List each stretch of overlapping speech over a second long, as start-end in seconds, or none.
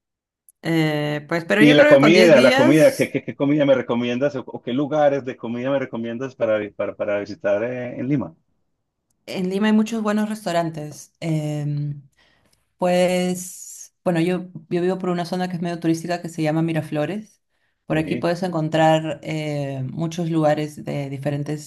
1.6-3.1